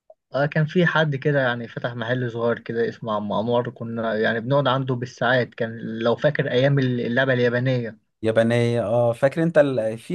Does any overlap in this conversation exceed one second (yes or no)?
no